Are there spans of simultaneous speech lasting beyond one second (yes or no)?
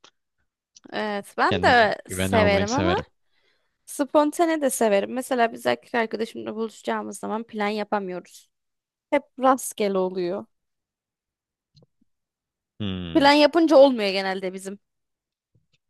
yes